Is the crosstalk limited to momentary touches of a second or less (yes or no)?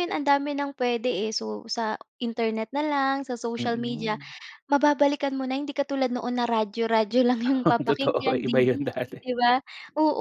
no